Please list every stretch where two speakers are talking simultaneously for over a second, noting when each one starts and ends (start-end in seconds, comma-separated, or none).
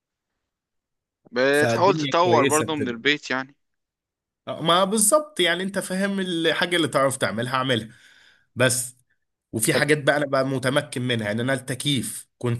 1.5-3.0